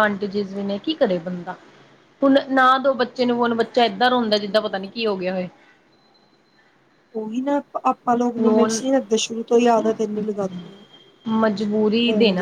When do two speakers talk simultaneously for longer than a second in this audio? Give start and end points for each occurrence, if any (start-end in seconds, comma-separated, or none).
none